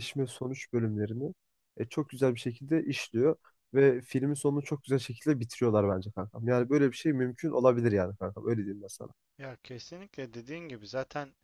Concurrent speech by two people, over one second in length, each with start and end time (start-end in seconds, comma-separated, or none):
none